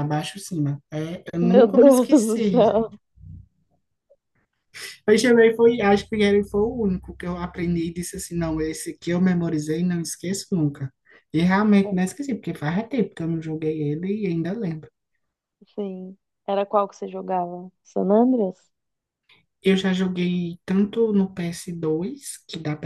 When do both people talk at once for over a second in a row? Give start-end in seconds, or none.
1.4-2.7